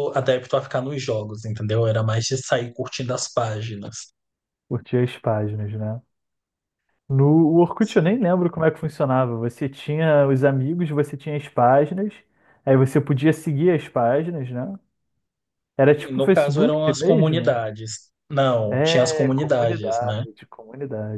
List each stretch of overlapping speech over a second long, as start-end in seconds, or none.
16.0-17.6, 18.7-20.2